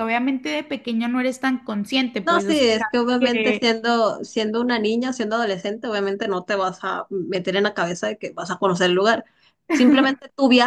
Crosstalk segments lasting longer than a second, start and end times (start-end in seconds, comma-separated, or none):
2.2-3.8